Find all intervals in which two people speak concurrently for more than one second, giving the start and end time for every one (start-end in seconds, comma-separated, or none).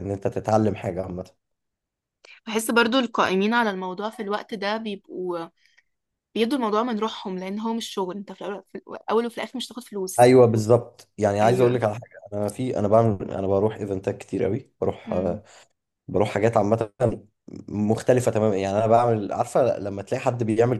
none